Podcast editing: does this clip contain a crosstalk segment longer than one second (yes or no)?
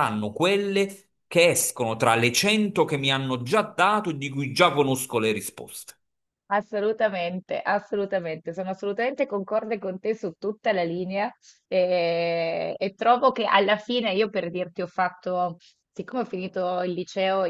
no